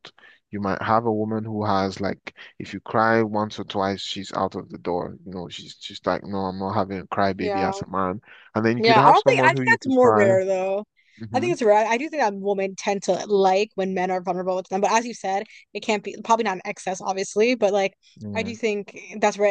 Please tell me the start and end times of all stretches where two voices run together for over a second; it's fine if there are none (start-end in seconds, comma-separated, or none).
8.8-10.3